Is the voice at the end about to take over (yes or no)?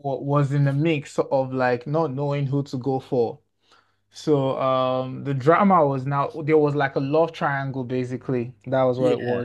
no